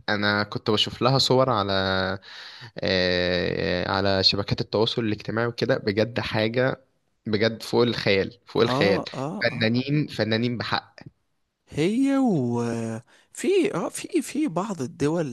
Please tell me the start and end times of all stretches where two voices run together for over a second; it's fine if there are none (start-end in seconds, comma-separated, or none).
none